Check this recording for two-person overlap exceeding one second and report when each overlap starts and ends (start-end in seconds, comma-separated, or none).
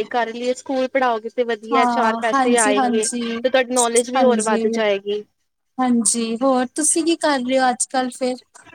1.7-3.0